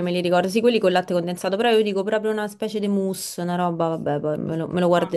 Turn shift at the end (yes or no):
yes